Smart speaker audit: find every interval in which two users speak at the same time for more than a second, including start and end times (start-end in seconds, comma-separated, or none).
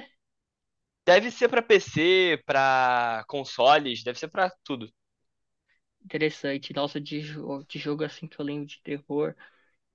none